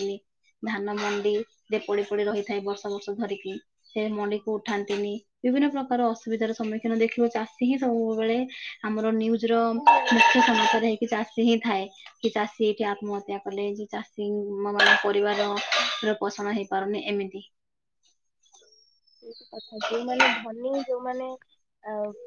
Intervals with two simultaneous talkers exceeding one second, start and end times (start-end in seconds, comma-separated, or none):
none